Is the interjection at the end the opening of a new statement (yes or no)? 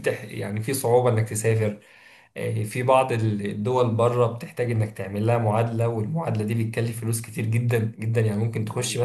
no